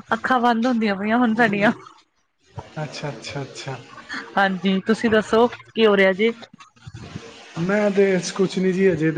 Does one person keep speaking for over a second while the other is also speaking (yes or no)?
no